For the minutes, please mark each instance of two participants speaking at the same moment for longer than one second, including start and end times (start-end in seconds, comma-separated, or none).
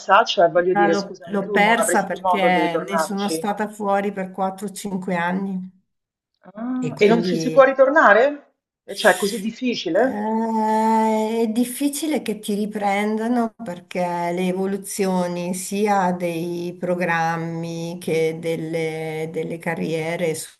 0.7-3.5